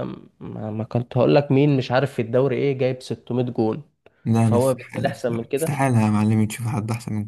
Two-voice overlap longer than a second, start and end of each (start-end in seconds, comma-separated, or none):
4.4-5.8